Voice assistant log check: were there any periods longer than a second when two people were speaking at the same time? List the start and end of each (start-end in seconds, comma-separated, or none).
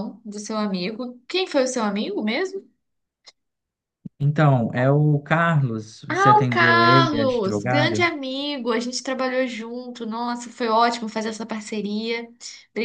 6.1-8.0